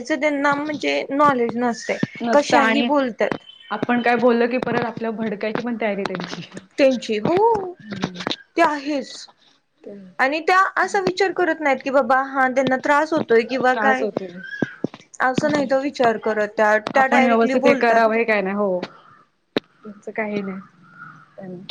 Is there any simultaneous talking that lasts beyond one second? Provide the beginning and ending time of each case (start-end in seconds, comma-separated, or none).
none